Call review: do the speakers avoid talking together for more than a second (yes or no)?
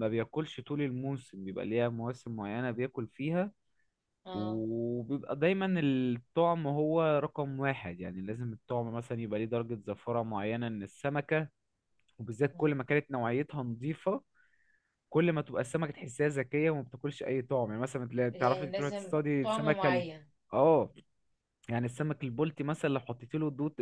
no